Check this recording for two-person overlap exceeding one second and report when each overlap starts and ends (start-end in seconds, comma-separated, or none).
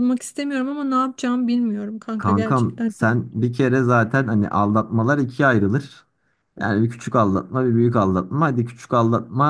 2.2-3.5